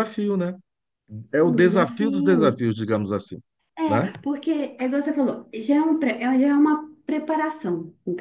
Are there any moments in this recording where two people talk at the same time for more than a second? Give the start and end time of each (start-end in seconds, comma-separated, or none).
1.4-2.6